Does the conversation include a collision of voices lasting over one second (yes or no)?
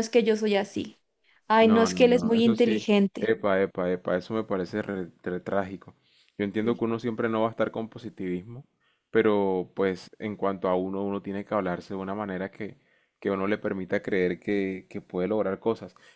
yes